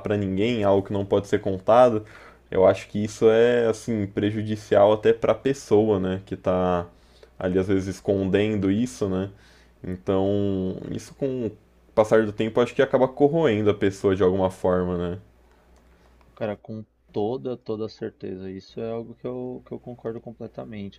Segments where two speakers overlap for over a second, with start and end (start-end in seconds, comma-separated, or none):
none